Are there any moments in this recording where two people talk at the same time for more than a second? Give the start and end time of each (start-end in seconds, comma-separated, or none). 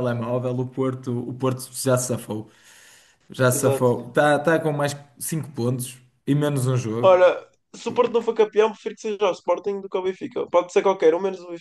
none